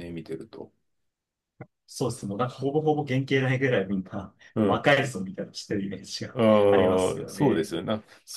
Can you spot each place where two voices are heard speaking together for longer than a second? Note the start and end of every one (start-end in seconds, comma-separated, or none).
6.3-7.8